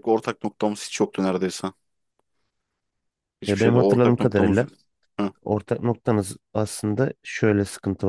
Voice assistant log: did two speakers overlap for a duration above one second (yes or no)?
yes